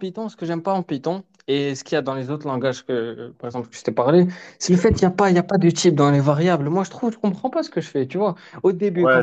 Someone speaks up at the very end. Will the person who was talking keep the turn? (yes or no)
no